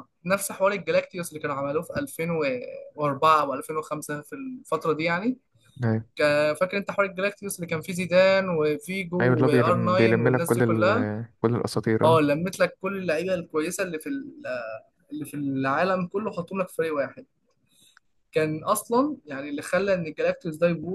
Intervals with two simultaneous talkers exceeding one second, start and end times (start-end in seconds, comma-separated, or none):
9.2-11.1